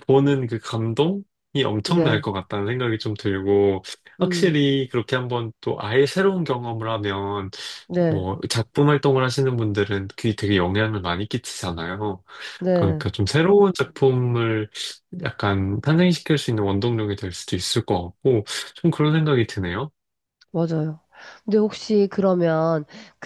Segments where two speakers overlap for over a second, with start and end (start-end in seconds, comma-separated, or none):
none